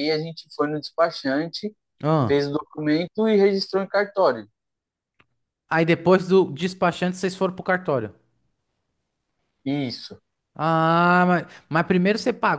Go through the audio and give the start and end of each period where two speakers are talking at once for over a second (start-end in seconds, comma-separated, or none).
none